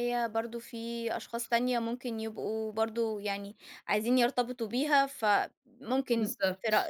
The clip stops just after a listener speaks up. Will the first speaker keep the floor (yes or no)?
yes